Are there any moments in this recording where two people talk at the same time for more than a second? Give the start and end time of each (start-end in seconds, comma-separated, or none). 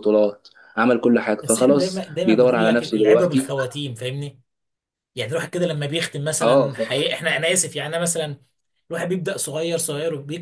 1.4-3.5